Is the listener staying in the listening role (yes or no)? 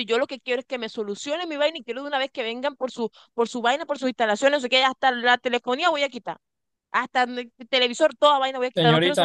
no